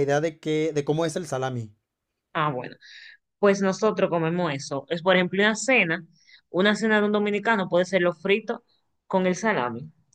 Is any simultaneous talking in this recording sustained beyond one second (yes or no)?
no